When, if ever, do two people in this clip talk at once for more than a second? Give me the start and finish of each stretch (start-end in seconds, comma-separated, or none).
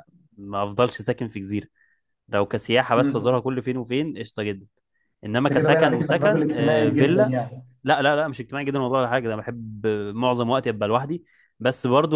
5.4-7.4